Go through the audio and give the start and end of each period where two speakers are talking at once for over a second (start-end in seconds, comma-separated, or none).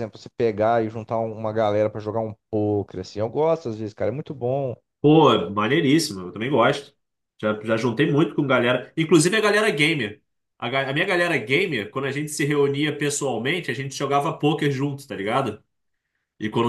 none